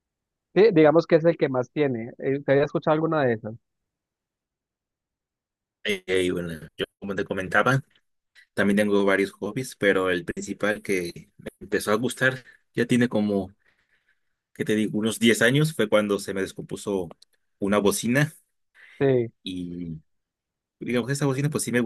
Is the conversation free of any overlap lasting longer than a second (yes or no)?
yes